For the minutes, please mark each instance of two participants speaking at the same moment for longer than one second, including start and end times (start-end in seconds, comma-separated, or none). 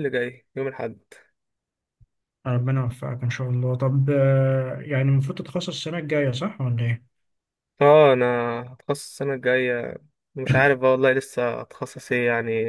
none